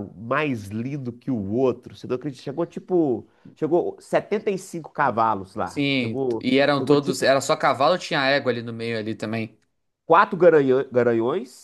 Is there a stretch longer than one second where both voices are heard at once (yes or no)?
yes